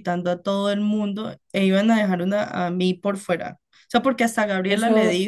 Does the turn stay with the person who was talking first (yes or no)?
no